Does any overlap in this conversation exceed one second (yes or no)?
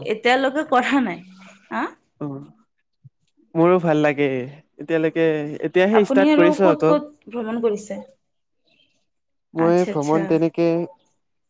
yes